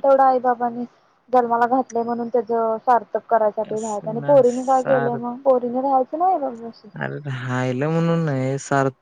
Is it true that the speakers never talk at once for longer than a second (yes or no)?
no